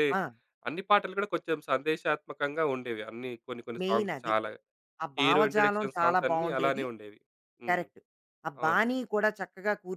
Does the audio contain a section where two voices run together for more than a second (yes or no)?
yes